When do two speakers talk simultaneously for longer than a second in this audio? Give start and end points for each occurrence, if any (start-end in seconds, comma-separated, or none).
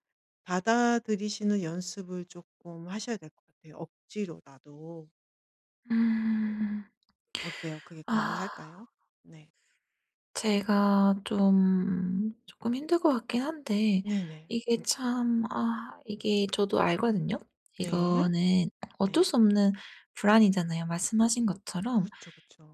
none